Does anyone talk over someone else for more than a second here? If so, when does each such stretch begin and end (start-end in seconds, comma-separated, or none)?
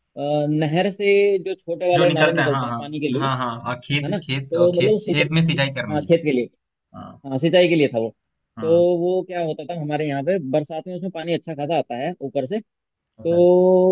2.0-3.3, 4.0-6.2